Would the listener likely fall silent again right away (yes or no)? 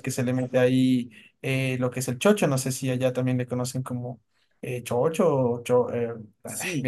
no